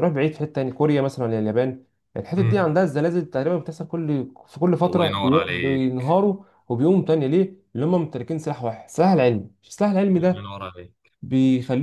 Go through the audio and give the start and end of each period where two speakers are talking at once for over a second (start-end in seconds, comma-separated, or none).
4.9-6.2